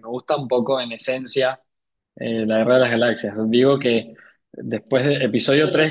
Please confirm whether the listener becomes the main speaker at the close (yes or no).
no